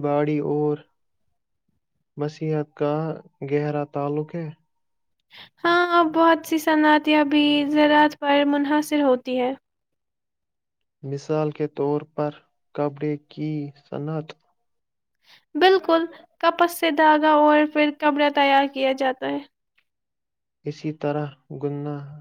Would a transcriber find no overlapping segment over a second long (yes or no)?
yes